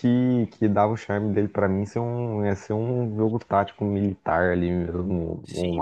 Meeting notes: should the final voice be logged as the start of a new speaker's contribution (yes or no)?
yes